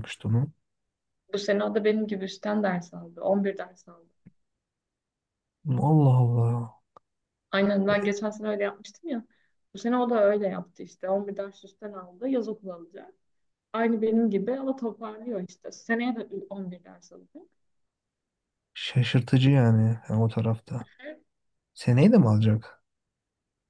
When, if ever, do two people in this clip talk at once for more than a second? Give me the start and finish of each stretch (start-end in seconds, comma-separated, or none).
none